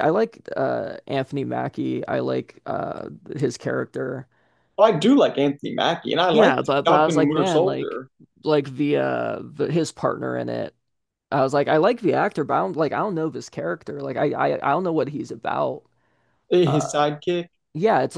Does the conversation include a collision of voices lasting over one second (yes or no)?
yes